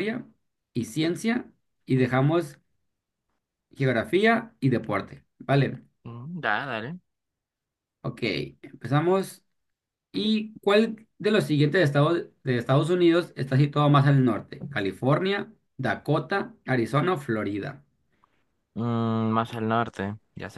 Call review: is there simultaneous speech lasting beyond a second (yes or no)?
no